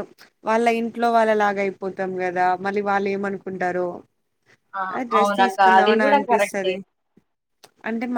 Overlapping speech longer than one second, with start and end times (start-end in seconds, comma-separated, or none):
5.2-6.7